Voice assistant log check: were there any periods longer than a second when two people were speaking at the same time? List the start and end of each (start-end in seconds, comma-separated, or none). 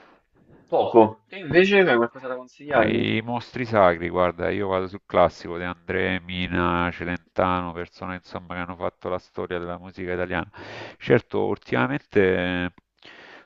none